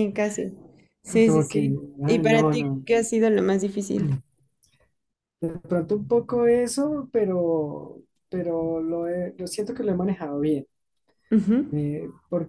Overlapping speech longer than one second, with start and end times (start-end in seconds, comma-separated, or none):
1.2-2.9